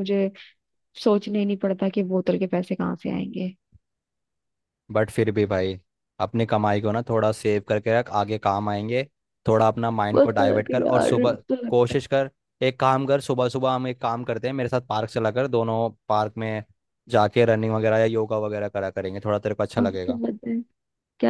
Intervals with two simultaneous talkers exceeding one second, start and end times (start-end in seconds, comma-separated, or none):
10.1-12.0